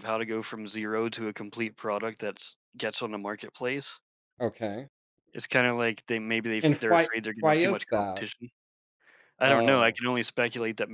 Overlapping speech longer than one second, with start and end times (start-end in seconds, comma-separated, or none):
6.6-8.2